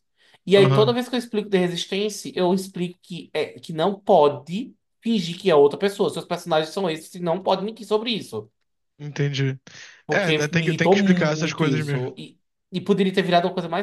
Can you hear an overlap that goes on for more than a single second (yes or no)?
yes